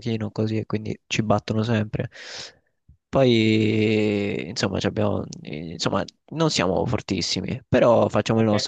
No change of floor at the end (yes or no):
no